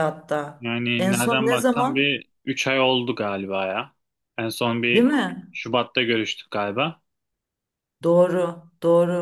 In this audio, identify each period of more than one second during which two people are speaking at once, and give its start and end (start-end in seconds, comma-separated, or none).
0.6-2.2